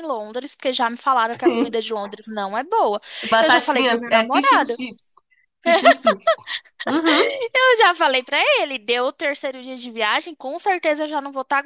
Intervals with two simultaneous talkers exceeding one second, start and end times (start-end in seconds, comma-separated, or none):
3.4-4.8